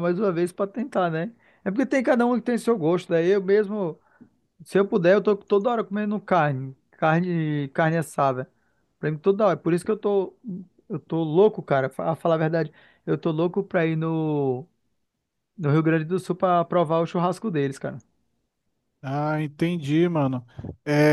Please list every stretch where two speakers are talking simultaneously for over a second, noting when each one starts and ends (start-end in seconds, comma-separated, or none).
none